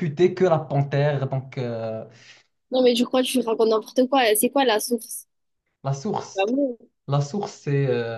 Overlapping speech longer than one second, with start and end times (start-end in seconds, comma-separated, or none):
none